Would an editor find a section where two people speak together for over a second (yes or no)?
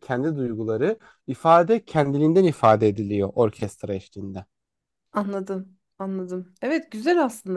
no